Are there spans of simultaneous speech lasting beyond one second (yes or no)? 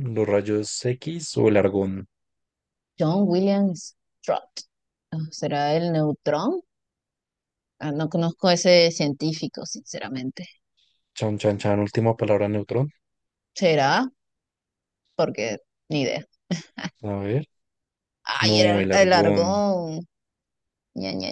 yes